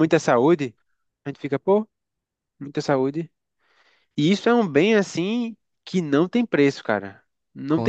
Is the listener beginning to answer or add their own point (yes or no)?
no